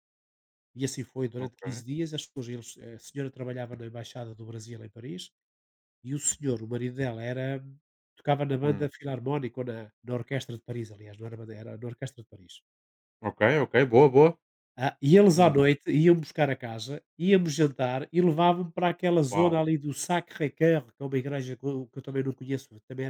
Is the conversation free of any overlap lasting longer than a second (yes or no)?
yes